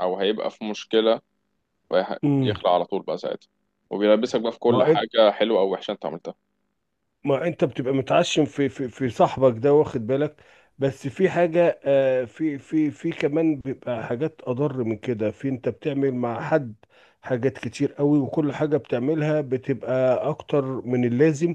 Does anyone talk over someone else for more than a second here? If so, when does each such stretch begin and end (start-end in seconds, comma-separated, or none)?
none